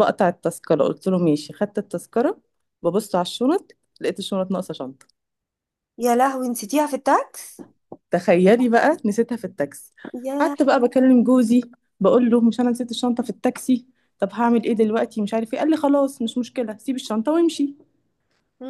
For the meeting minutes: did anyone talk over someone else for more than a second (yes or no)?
no